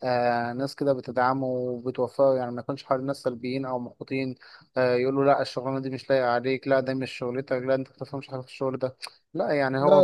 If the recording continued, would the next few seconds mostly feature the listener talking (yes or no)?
no